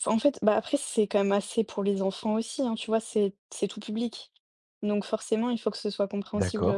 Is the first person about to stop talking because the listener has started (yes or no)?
no